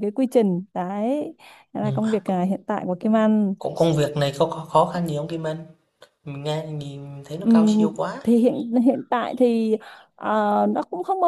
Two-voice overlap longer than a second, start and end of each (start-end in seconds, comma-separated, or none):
none